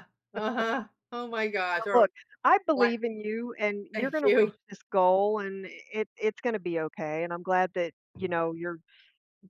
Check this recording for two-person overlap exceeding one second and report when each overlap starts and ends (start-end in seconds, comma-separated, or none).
none